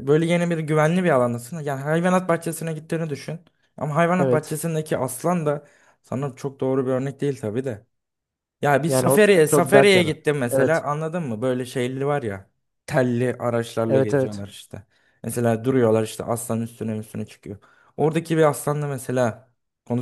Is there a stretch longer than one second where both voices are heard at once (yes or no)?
yes